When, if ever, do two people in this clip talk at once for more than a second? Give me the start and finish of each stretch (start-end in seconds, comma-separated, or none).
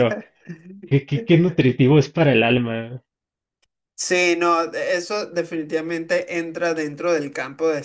none